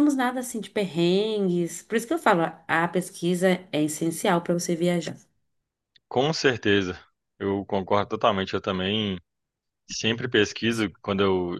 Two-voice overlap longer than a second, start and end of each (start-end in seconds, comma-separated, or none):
none